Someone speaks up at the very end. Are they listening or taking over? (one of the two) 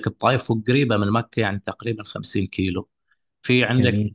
listening